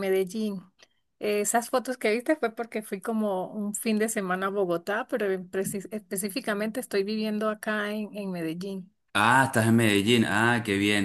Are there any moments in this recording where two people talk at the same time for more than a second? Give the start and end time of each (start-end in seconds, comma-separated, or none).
none